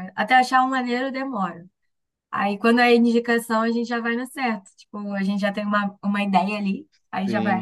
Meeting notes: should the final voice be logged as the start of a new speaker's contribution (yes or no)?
yes